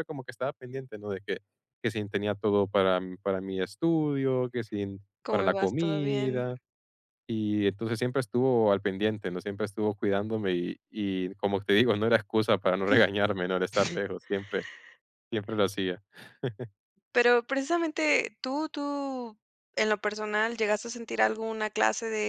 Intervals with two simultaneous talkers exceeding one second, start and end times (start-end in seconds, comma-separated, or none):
5.2-6.5